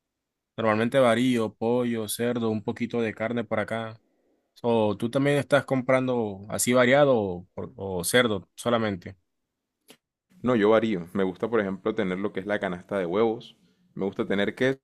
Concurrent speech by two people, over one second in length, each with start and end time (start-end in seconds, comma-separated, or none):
none